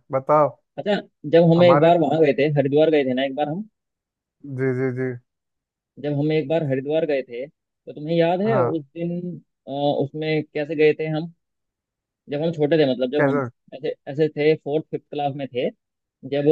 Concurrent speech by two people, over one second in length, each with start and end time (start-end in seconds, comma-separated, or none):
none